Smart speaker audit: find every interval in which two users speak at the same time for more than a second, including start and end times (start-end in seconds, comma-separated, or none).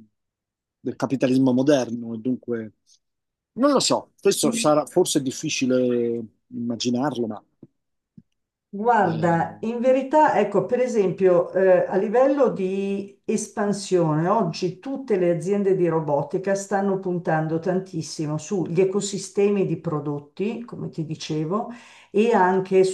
none